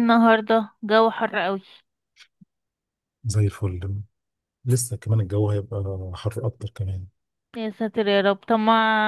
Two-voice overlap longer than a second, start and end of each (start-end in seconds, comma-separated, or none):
none